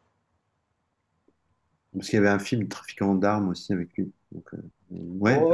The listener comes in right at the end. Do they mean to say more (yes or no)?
yes